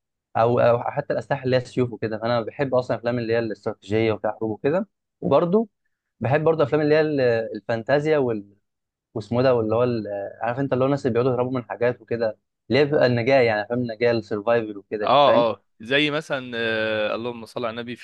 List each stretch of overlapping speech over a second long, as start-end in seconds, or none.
none